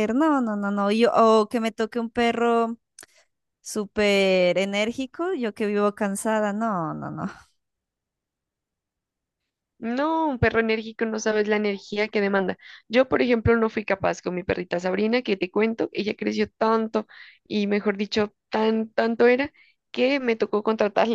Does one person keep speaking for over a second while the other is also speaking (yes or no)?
no